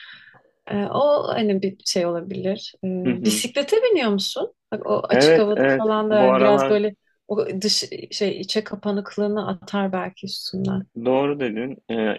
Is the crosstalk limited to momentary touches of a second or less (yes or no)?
no